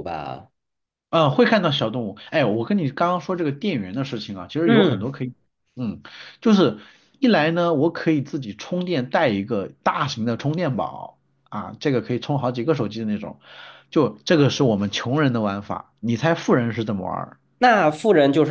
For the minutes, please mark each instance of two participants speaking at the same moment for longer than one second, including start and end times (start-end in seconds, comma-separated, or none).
none